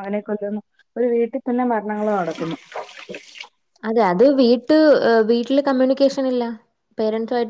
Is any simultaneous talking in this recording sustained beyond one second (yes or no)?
no